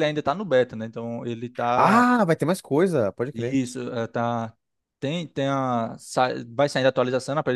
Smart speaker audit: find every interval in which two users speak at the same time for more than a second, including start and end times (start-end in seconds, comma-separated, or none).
none